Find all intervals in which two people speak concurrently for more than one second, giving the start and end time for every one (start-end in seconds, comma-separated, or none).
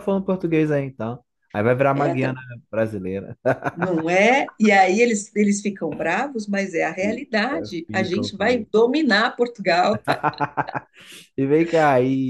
7.0-8.7